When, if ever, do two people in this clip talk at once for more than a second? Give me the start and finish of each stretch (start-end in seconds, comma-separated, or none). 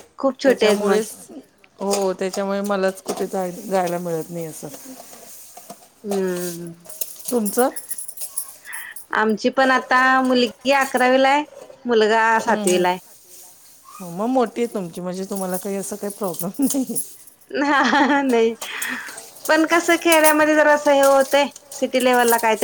none